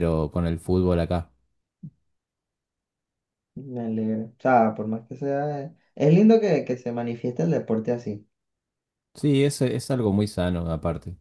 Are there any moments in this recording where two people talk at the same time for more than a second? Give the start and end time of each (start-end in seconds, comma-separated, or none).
none